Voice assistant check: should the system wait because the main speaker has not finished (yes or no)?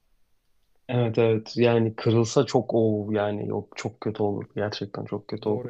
no